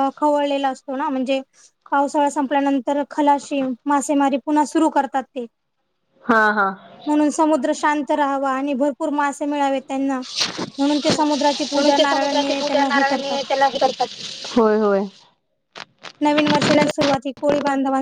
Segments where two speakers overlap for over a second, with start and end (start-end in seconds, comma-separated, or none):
11.7-13.4